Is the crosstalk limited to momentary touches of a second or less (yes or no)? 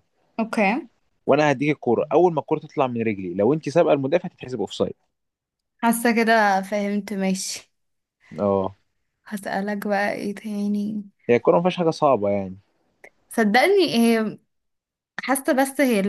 yes